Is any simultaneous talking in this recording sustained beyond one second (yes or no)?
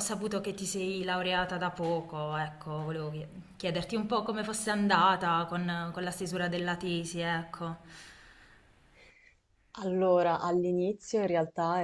no